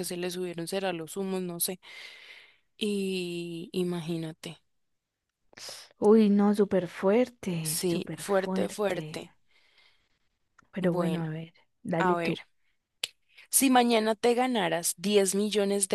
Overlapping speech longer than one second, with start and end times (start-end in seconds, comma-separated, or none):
7.6-9.3